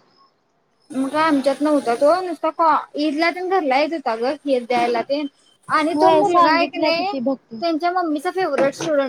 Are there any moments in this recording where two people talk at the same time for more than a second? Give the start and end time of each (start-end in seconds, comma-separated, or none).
5.9-7.5